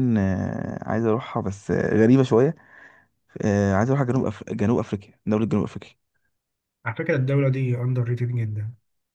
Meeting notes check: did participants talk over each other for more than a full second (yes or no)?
no